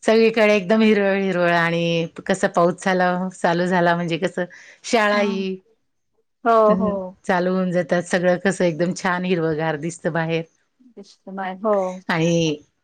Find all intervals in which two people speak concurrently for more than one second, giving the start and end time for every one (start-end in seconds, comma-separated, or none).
none